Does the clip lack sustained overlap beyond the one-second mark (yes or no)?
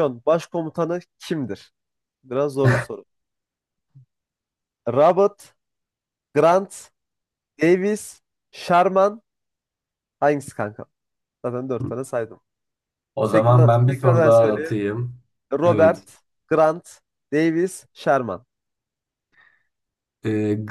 no